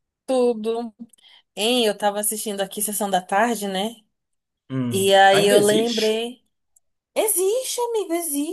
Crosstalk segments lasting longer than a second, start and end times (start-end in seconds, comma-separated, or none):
4.9-6.2